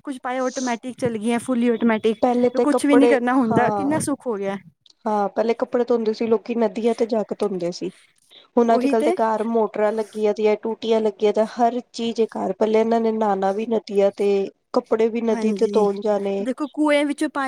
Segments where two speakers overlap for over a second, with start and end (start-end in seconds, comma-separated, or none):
2.2-4.0